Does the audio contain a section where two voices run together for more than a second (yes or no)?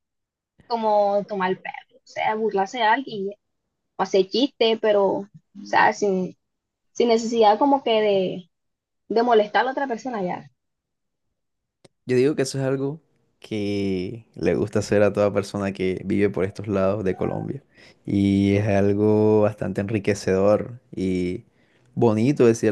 no